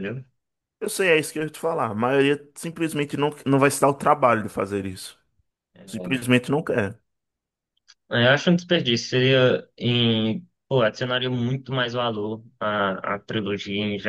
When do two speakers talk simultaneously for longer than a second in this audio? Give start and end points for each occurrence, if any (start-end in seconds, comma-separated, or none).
none